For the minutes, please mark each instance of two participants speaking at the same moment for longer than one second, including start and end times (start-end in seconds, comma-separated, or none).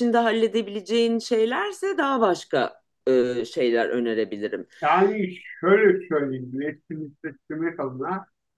none